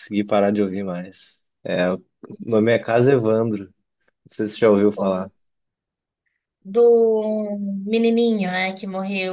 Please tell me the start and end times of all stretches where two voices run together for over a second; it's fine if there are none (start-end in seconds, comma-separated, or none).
none